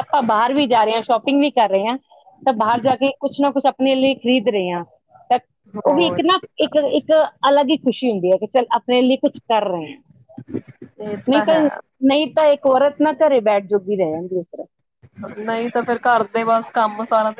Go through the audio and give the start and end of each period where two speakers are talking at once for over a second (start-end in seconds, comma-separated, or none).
none